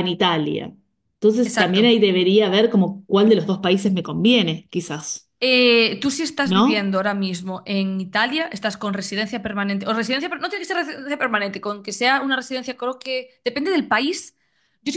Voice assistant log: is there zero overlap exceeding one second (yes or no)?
yes